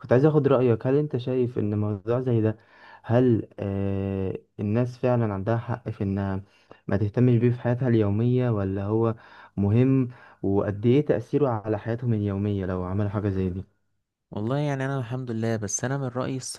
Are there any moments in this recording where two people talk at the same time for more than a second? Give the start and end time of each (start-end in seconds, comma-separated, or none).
none